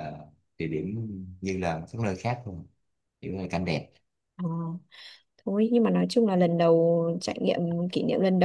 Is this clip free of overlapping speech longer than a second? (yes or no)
yes